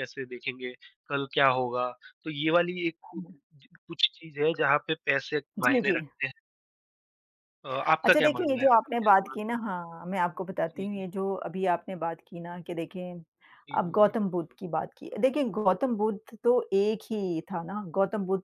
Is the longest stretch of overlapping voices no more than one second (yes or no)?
no